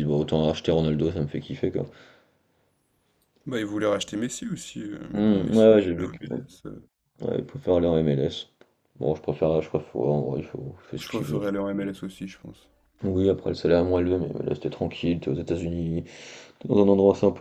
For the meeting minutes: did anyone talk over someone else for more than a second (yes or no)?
yes